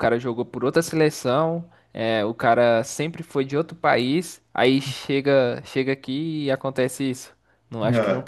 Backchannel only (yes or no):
yes